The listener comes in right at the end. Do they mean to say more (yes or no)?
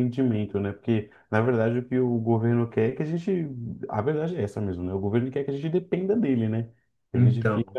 no